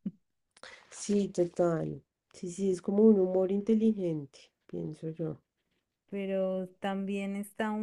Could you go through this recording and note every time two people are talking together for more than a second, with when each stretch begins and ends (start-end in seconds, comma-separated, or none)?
none